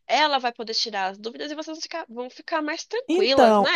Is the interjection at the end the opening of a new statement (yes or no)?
yes